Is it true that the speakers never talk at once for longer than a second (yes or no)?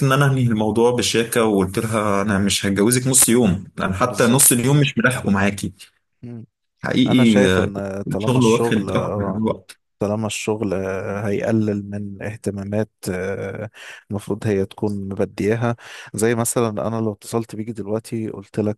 no